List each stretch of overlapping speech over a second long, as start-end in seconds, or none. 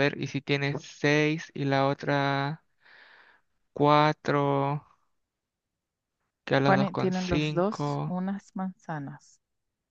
6.5-8.2